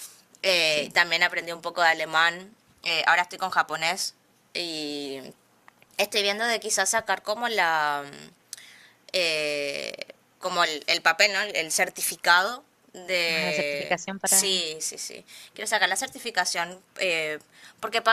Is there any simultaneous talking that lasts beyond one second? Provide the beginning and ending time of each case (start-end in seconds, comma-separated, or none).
13.3-14.7